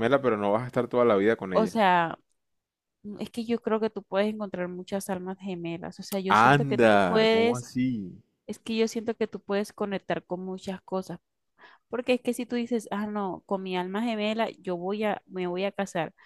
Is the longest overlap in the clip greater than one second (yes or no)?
yes